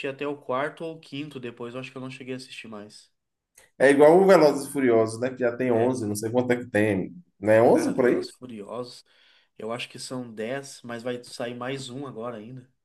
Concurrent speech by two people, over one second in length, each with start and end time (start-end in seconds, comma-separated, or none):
none